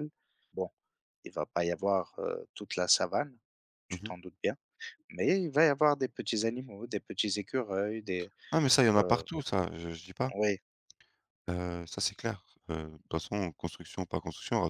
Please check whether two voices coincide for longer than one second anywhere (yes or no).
no